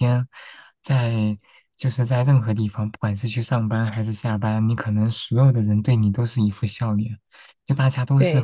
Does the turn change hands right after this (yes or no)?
no